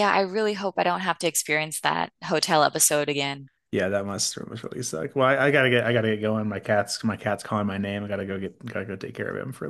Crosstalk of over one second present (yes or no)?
no